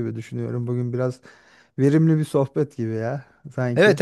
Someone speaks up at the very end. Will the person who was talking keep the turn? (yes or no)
no